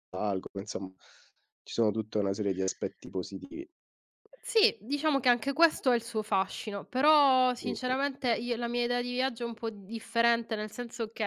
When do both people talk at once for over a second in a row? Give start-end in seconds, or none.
none